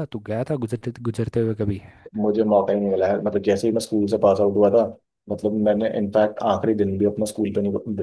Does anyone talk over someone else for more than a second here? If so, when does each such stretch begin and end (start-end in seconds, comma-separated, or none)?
none